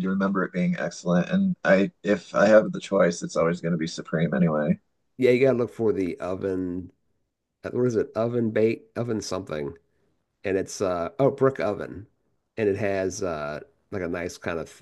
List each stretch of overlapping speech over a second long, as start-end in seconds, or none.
none